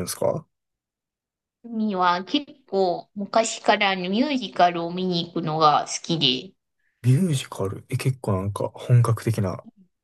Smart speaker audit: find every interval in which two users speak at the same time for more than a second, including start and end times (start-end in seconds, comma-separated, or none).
none